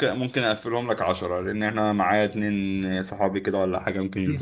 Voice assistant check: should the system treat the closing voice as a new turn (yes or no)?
yes